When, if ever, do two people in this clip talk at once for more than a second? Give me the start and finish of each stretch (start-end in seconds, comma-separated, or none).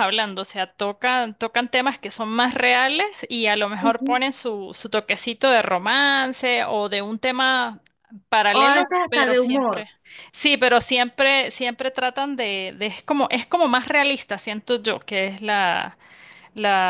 8.5-9.8